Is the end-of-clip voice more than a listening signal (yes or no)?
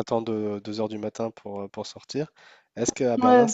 no